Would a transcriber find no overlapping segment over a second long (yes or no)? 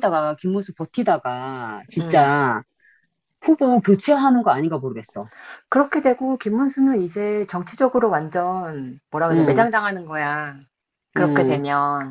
yes